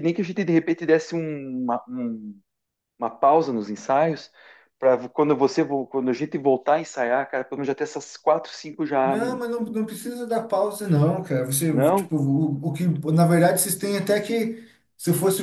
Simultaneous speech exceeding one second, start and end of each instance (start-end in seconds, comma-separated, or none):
none